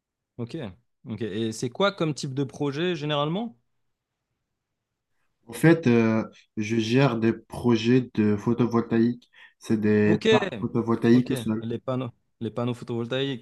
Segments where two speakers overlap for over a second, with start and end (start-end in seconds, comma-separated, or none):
none